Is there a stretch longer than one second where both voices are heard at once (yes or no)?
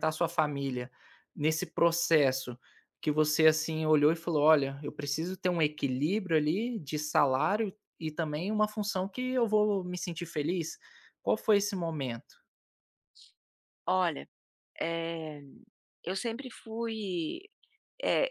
no